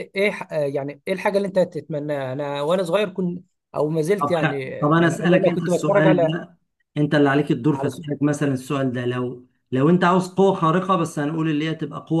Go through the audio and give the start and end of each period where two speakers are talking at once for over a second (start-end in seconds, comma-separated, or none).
4.2-6.4